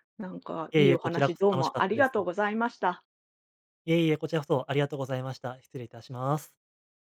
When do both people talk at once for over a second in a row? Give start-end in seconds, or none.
0.7-2.1